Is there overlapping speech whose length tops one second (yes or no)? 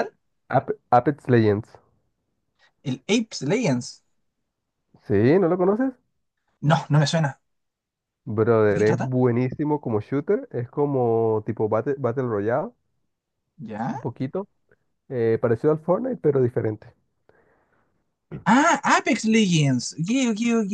no